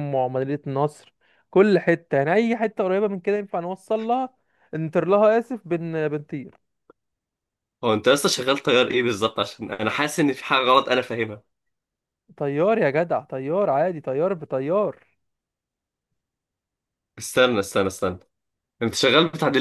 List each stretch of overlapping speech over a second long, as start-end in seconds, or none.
none